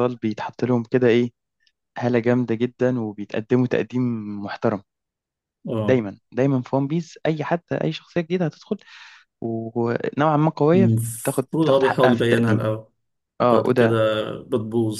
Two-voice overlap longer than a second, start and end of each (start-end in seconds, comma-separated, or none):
10.7-12.6